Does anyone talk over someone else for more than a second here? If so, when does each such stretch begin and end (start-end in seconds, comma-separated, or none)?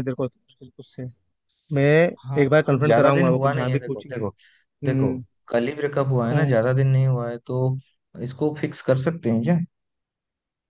2.4-4.1